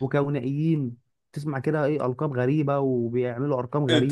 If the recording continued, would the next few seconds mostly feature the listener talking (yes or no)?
yes